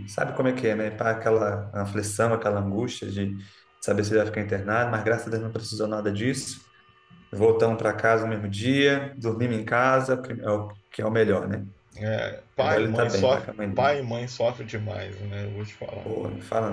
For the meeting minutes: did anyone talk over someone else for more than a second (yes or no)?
yes